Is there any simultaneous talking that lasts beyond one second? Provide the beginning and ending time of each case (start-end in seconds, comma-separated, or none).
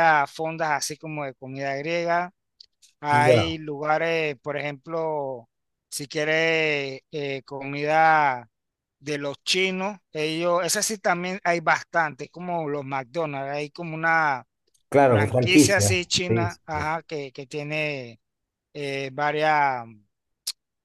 15.1-16.8